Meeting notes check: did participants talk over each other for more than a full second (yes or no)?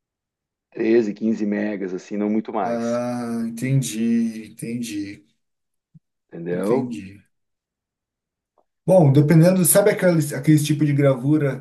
no